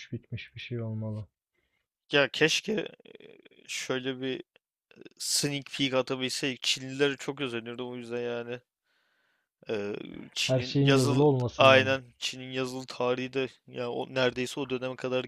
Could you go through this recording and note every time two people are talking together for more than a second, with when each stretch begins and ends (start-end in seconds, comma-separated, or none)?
10.4-12.0